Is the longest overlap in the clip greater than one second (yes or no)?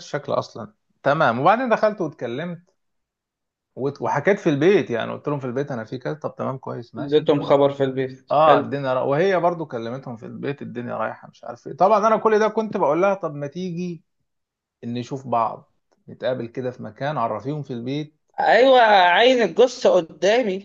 no